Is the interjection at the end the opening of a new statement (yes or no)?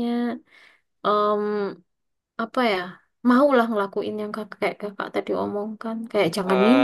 yes